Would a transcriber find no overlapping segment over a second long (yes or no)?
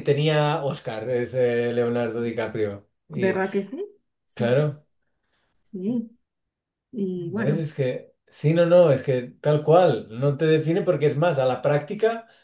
yes